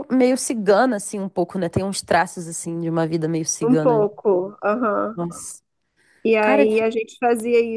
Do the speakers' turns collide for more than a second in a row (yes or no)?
no